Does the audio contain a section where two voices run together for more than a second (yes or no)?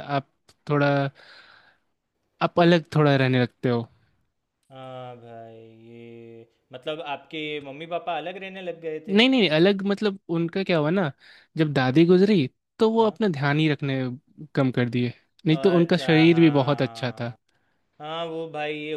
yes